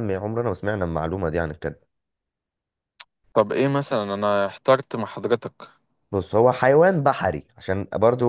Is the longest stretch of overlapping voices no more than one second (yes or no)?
yes